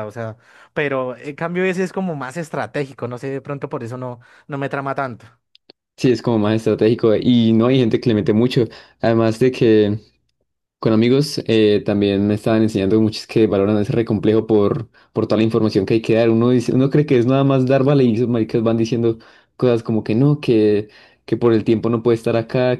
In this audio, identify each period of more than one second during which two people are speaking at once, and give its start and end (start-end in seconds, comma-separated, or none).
none